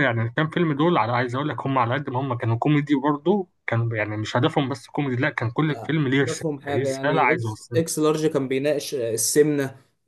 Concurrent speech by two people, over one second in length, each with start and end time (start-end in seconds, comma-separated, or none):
5.7-7.8